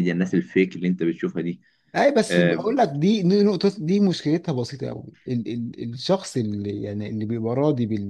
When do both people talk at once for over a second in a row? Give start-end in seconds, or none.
none